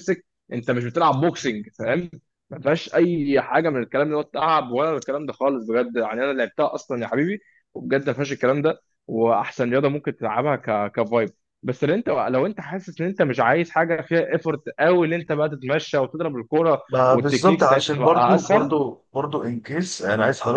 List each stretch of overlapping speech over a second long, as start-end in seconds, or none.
16.9-18.8